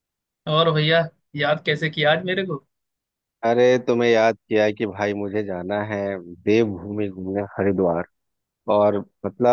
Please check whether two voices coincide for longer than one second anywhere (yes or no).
no